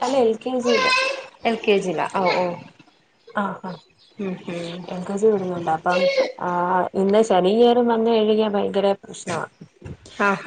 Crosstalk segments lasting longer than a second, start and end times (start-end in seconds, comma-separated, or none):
none